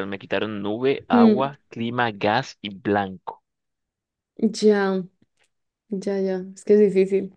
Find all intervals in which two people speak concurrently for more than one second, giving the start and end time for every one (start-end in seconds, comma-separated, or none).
none